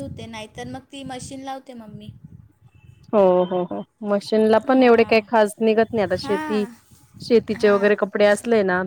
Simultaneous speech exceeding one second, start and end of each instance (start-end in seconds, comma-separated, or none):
none